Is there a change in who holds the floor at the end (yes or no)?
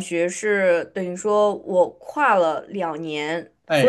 no